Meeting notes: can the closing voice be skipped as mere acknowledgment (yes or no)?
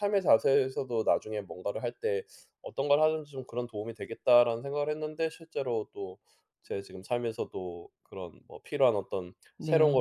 yes